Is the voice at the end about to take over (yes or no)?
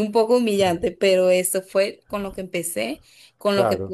no